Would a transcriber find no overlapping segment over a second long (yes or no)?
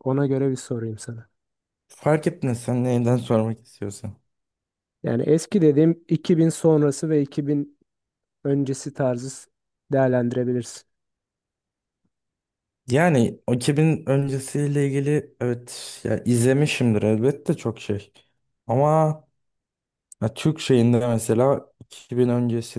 yes